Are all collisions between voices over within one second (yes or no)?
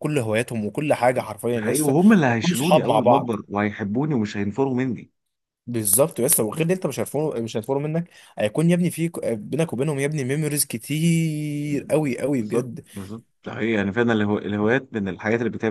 no